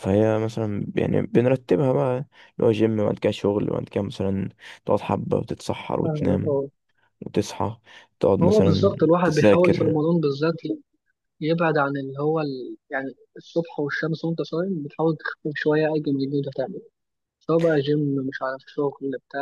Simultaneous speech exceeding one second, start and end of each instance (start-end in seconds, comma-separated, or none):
8.4-10.0